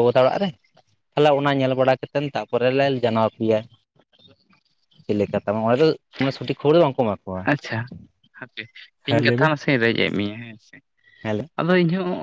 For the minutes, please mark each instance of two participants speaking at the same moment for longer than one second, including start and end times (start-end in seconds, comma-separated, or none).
none